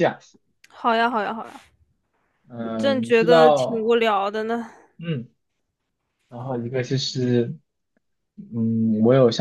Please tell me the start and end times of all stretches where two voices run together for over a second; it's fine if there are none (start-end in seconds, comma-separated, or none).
2.8-4.0